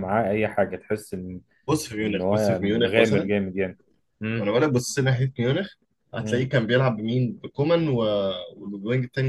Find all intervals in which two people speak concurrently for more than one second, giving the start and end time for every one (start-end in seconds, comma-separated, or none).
2.0-3.3